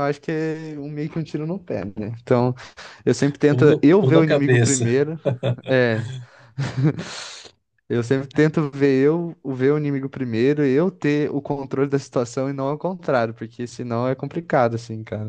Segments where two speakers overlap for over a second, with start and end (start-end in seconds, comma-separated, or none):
3.5-5.0